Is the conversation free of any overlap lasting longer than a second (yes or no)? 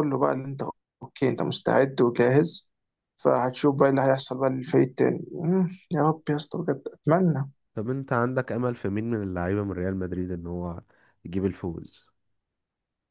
yes